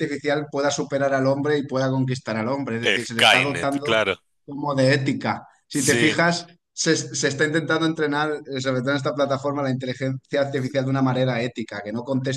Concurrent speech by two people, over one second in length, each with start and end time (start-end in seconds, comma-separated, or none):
2.8-4.1